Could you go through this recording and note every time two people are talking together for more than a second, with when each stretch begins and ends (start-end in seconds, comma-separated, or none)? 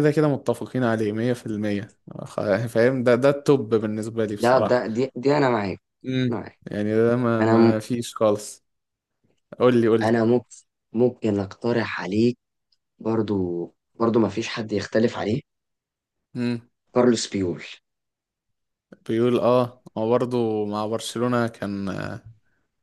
none